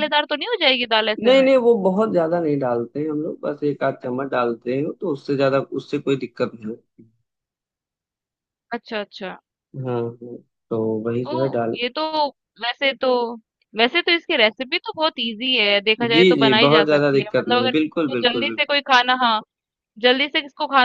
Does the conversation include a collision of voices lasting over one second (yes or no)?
yes